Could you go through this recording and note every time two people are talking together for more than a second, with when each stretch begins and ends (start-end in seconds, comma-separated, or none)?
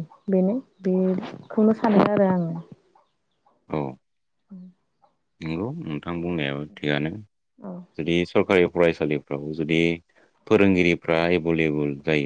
none